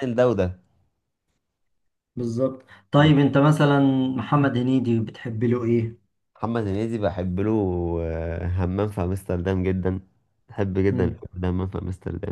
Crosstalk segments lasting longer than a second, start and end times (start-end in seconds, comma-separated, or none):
none